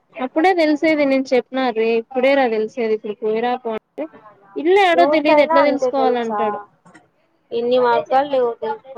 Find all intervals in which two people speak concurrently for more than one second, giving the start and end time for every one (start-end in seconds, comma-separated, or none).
5.0-6.4